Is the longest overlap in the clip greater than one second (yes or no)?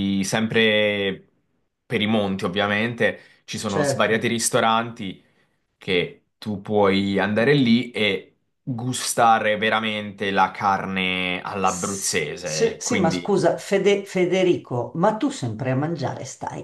yes